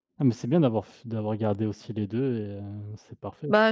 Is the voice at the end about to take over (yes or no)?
yes